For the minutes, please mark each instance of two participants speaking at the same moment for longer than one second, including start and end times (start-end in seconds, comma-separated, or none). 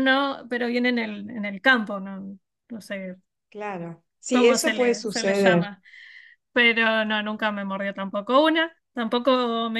4.3-5.7